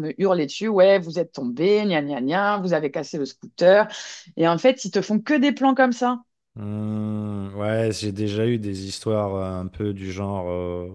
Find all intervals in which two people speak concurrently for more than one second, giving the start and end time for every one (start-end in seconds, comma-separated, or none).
none